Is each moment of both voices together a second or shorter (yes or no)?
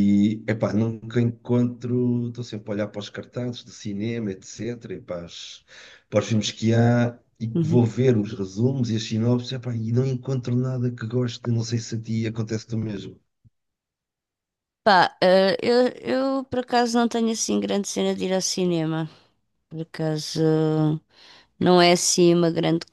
yes